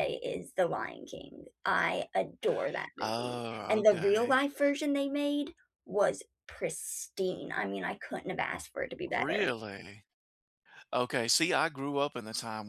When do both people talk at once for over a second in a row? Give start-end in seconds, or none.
3.0-4.3